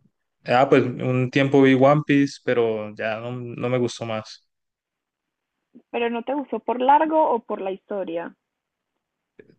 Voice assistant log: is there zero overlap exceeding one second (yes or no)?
yes